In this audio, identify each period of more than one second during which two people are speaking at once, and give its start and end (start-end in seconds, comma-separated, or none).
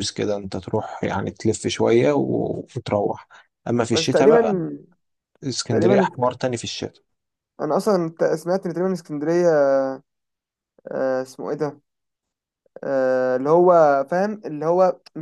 none